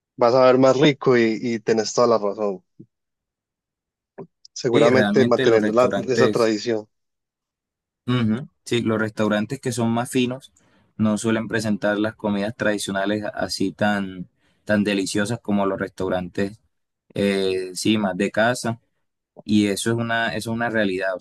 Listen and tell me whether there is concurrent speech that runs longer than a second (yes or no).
yes